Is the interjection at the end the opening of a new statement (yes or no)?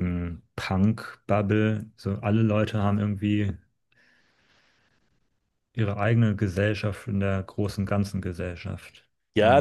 yes